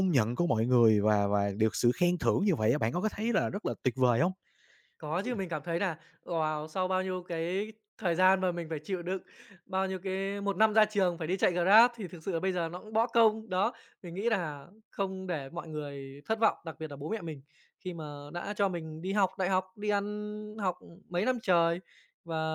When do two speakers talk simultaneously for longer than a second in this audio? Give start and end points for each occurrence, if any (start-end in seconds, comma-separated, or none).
none